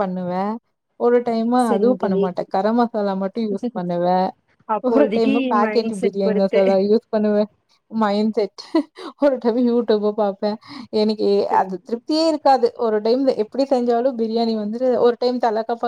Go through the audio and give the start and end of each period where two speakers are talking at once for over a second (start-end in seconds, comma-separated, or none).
4.9-6.6